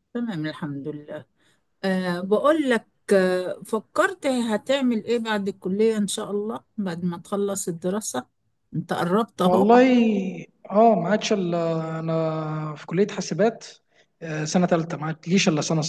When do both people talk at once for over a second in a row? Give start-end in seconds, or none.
none